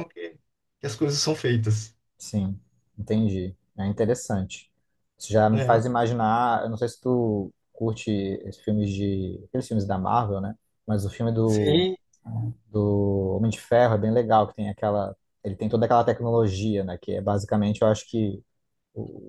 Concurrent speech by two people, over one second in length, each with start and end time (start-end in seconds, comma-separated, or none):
none